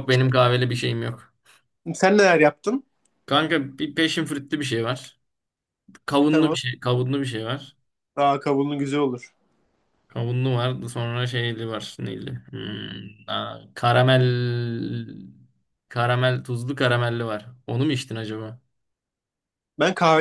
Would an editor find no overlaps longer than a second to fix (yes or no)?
yes